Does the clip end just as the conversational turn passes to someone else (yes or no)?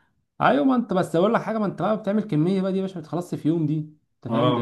yes